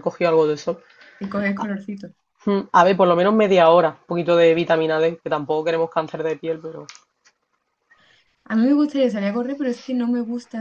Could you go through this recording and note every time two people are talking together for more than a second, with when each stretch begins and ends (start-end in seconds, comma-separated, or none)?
none